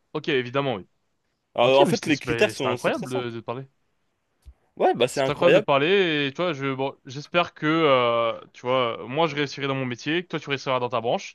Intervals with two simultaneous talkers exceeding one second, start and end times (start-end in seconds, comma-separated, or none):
1.6-3.4